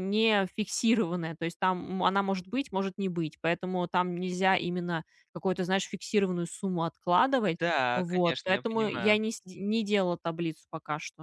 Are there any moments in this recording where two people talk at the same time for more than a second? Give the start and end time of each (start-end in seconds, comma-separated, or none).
7.9-9.2